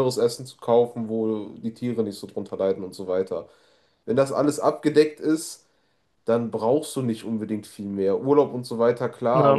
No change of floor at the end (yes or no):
yes